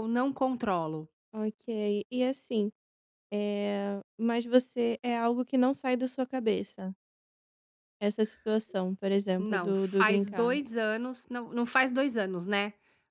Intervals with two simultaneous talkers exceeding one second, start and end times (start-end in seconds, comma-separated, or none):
9.4-10.6